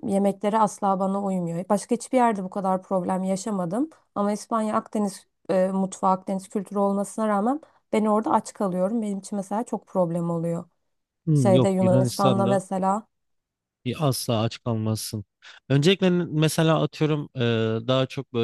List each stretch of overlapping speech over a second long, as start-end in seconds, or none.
11.3-12.6